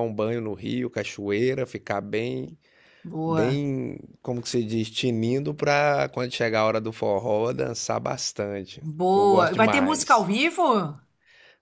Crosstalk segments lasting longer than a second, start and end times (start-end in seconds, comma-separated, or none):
8.8-10.3